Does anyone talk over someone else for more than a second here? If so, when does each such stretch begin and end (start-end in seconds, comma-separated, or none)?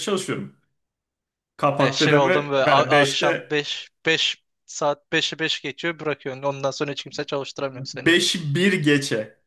1.8-3.5